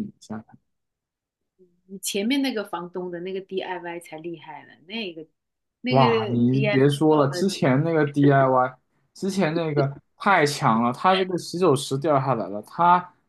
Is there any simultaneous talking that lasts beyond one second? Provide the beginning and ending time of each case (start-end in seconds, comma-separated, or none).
5.9-7.5